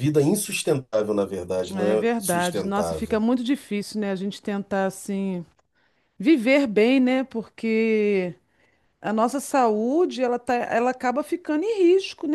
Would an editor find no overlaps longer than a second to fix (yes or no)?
no